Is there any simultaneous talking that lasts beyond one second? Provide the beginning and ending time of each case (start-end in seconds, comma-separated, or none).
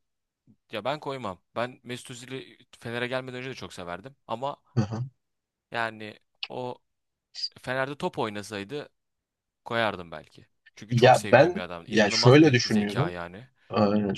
10.9-13.1